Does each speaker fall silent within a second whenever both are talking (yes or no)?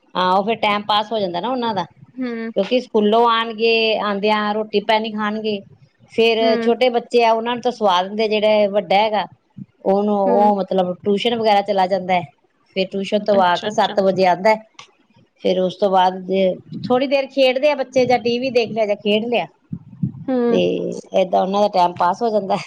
yes